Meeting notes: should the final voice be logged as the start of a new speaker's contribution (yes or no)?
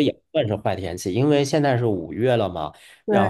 no